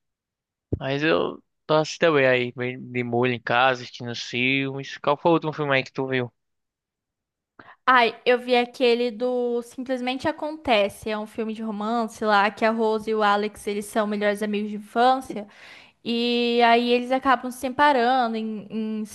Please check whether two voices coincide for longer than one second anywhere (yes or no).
no